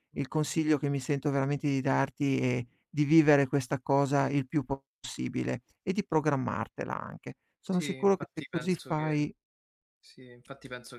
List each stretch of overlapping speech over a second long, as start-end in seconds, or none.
7.6-9.1